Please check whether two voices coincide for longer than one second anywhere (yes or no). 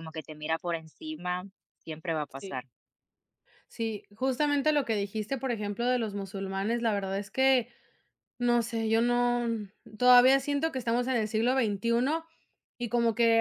no